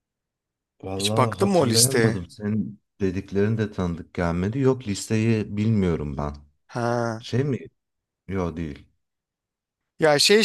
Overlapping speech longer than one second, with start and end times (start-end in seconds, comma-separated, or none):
0.9-2.2